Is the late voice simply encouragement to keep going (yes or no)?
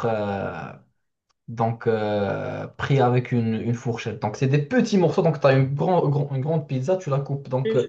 yes